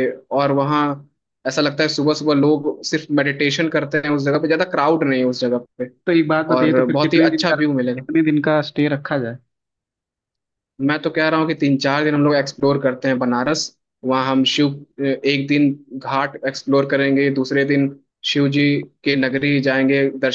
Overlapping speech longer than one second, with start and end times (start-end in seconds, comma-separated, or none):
6.6-8.1